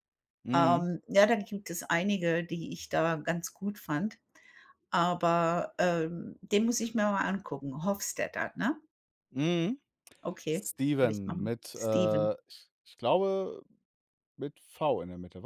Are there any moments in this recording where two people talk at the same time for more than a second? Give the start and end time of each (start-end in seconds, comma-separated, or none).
10.5-12.3